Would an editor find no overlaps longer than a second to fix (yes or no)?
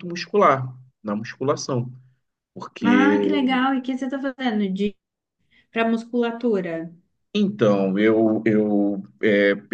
yes